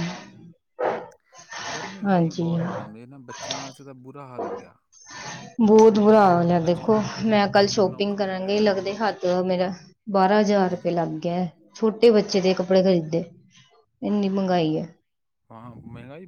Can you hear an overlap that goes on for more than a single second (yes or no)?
yes